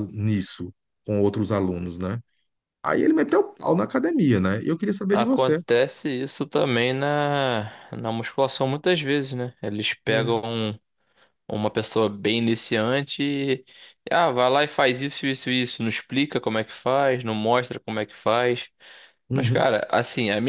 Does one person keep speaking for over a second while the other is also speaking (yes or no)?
no